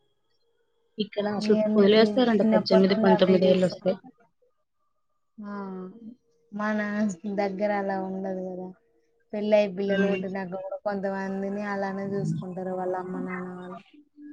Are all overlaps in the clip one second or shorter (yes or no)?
no